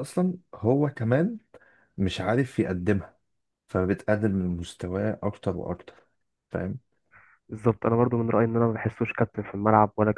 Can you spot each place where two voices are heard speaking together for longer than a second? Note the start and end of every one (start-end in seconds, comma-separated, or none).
none